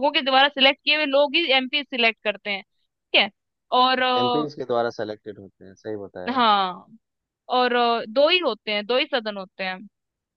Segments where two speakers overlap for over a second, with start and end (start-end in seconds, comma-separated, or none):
none